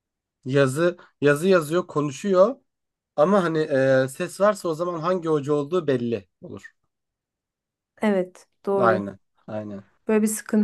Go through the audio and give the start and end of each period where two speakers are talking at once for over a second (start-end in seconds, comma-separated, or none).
none